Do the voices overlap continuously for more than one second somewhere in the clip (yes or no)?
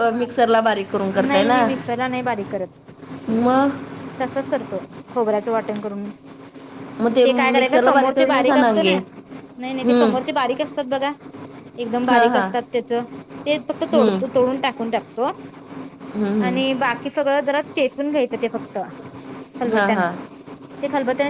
yes